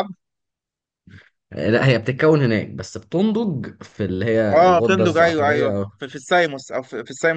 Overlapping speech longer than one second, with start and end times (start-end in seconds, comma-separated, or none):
4.5-5.9